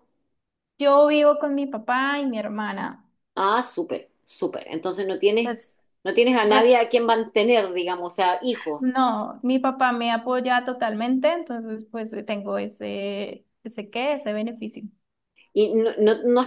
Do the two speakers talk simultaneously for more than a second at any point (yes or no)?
no